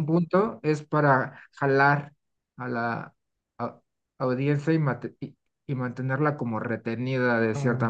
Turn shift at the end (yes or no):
yes